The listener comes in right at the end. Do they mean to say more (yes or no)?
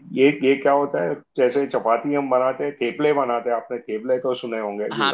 yes